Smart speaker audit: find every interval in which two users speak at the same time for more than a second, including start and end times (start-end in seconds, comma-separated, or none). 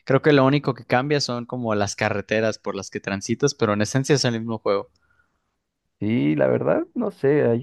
none